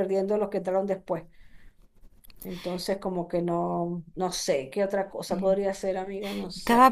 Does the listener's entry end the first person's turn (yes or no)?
yes